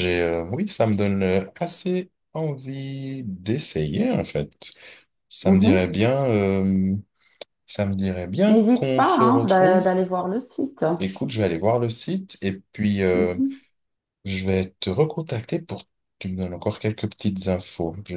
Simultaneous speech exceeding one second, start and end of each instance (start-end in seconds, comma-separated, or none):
8.4-9.8